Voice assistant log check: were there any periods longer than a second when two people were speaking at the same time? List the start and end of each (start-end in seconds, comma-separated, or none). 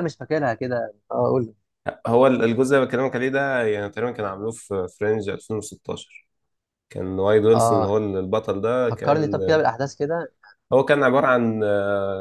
none